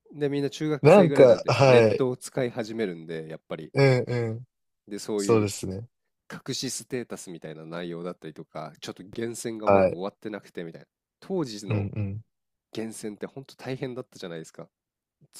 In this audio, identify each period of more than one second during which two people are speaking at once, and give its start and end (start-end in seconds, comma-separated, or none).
0.8-2.1